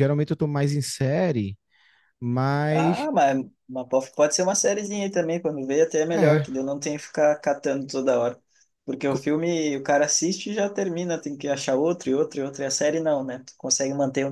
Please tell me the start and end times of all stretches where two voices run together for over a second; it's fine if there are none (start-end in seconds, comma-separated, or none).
none